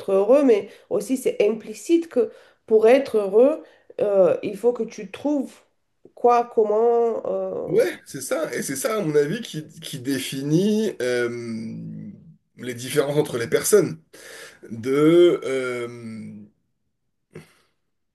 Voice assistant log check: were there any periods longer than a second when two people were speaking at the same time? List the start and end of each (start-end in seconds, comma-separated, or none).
none